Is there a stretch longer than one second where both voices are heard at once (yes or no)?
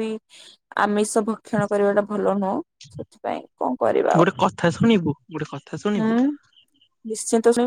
no